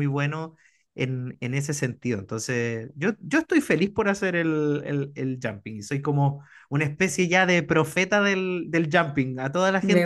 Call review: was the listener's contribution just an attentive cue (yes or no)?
yes